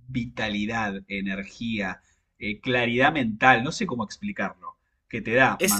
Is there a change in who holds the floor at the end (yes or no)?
no